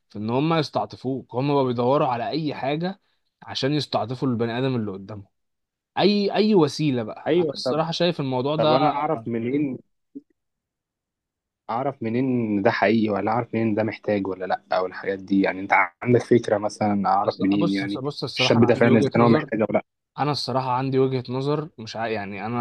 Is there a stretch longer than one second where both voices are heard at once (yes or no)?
yes